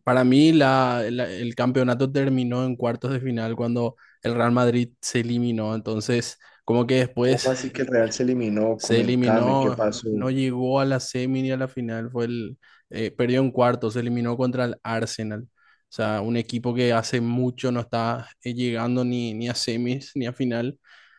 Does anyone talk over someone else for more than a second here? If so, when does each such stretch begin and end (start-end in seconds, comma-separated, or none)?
8.8-10.1